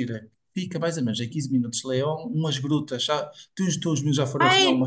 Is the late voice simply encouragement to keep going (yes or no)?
no